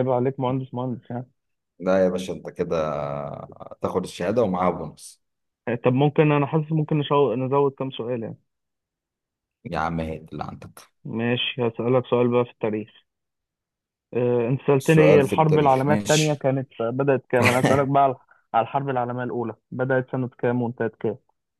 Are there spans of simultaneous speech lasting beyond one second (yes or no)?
yes